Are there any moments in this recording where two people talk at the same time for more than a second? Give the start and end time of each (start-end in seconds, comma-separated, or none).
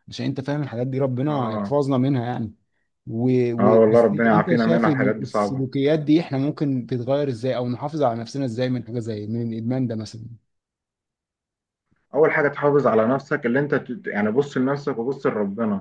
3.6-5.7